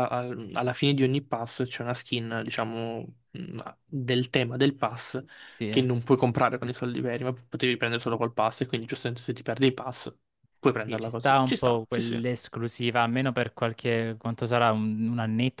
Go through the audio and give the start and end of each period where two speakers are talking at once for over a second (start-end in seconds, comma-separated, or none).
10.7-12.2